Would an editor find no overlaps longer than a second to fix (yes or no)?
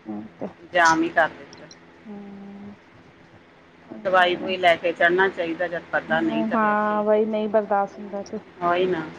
no